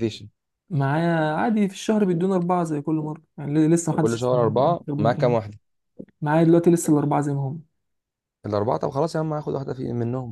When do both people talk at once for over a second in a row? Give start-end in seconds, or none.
4.0-5.4